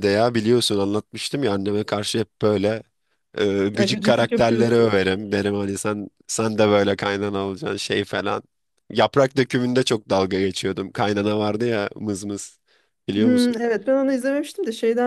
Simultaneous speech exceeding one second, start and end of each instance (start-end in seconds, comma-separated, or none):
3.7-5.0